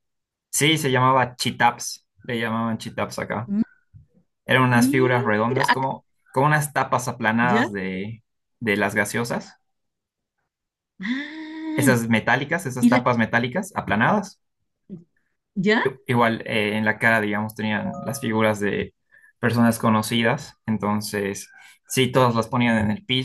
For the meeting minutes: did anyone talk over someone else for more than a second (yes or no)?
yes